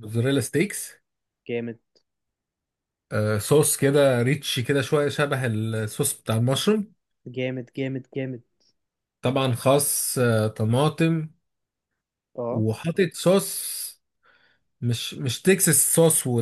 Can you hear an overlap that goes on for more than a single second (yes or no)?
no